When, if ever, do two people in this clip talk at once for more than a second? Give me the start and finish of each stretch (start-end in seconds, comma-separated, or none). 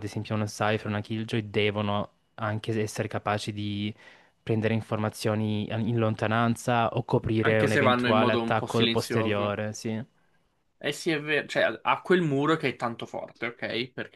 7.4-9.6